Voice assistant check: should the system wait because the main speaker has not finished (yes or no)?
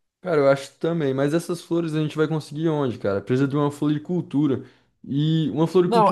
no